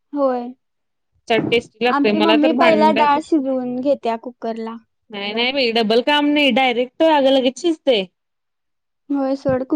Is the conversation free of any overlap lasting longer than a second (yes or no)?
no